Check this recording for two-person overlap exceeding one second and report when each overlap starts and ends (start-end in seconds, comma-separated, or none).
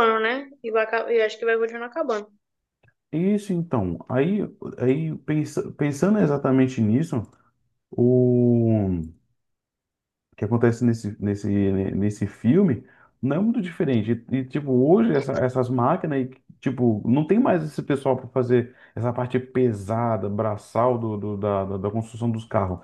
none